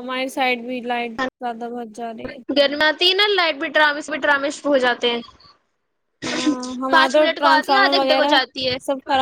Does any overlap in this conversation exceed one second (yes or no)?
yes